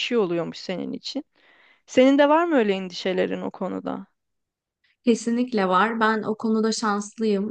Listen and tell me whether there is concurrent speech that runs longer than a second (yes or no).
no